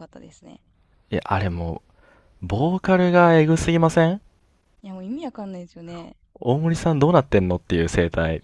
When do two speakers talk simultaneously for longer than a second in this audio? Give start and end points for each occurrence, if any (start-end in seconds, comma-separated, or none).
none